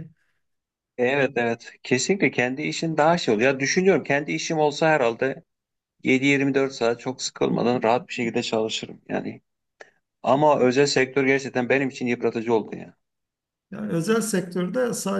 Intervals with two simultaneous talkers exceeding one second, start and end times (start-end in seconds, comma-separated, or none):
none